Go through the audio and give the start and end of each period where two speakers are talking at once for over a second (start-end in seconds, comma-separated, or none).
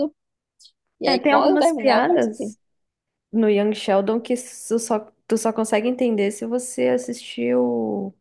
1.0-2.5